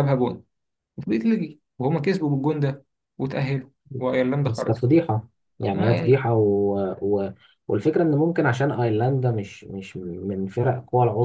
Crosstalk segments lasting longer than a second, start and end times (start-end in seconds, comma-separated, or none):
none